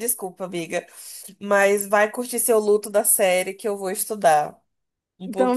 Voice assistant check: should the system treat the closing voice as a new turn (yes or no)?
yes